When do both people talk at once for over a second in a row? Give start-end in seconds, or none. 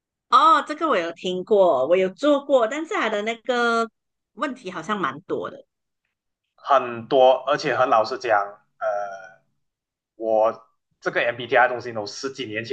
none